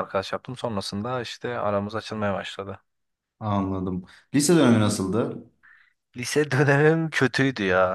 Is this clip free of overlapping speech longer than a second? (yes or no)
yes